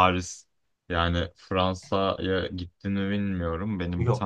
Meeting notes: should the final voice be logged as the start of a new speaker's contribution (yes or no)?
no